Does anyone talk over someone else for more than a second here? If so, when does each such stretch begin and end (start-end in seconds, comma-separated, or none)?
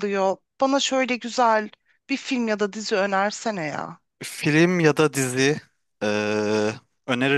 none